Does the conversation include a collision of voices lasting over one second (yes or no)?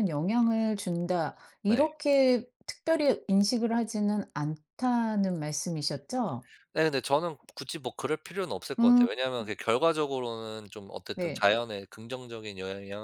no